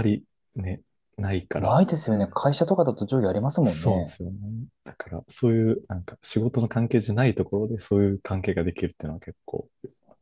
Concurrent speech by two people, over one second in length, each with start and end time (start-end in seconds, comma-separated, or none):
none